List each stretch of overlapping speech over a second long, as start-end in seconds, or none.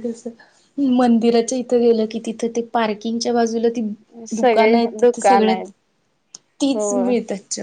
4.4-5.7